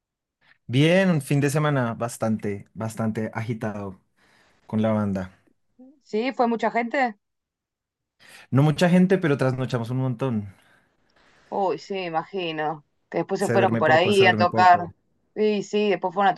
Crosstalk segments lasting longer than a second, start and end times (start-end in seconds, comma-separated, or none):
13.4-14.8